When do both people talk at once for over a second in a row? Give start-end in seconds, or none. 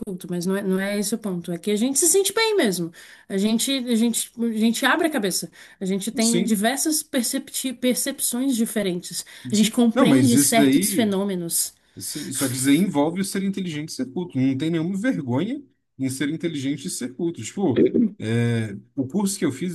9.5-11.2